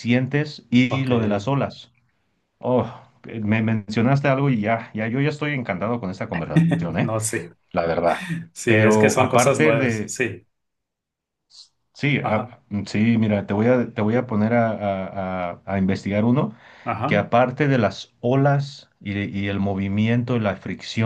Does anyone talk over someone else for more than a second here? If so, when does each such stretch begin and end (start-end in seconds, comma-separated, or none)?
8.7-10.2